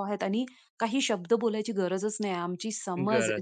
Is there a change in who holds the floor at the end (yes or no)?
no